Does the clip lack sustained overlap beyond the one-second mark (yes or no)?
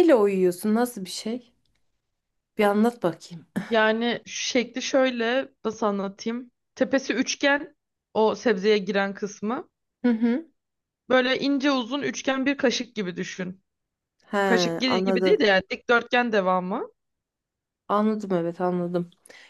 yes